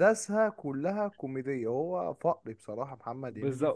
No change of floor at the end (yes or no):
no